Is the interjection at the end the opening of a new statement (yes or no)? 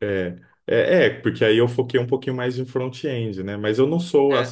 no